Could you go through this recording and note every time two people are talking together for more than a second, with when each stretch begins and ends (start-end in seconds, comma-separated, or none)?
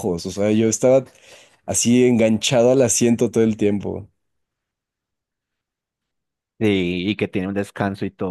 none